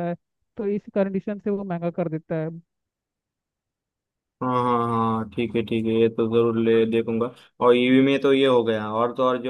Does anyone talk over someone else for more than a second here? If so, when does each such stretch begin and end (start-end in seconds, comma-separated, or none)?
none